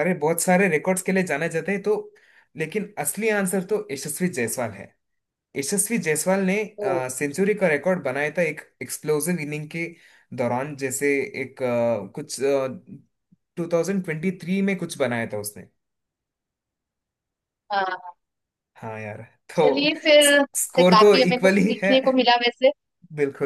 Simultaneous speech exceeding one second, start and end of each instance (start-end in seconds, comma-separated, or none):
20.6-21.9